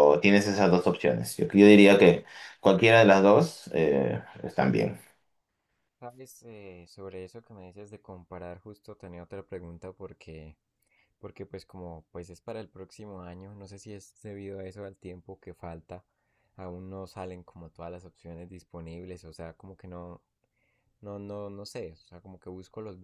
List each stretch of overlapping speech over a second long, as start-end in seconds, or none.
none